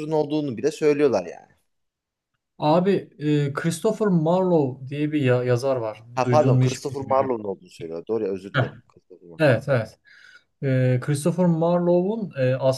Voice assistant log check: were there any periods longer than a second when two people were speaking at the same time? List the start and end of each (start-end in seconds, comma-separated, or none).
6.1-7.3